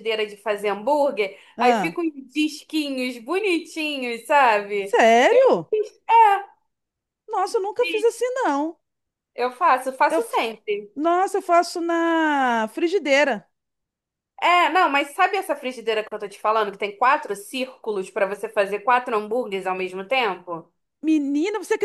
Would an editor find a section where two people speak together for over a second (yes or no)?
no